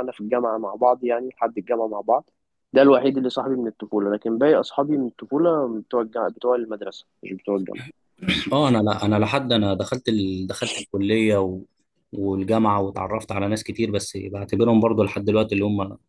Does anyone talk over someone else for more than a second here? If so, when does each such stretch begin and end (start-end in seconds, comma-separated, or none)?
none